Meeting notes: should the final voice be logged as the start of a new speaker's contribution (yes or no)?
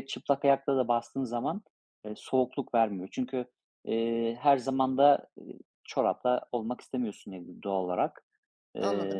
yes